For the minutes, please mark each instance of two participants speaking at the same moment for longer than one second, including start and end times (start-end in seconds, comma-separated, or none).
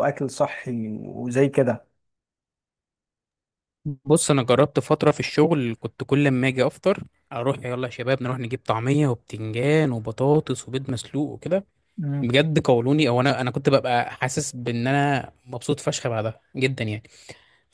none